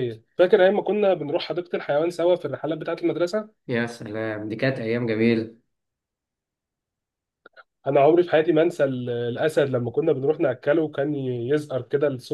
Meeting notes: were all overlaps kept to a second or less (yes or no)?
yes